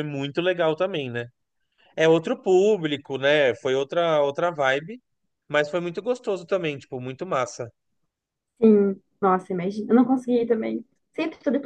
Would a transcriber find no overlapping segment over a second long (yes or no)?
yes